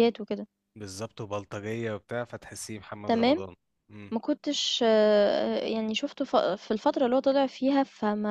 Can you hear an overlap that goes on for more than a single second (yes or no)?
no